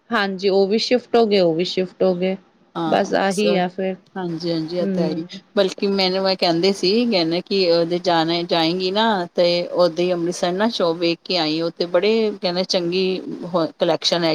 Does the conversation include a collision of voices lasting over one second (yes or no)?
no